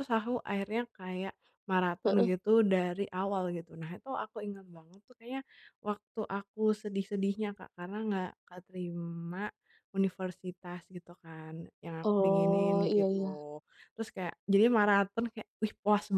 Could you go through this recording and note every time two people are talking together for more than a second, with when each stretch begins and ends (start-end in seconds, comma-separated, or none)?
12.0-13.3